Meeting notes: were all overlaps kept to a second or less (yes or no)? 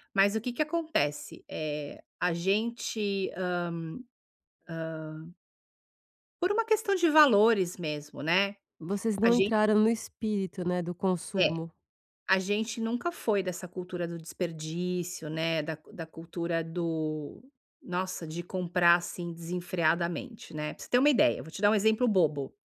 yes